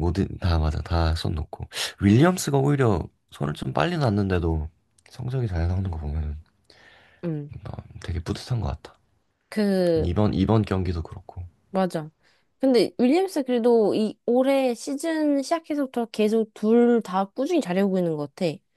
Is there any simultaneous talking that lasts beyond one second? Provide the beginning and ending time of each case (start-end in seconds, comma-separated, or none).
none